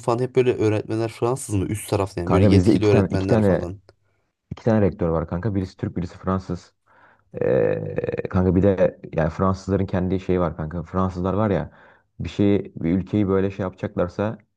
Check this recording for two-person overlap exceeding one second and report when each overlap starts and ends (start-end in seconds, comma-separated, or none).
2.2-3.6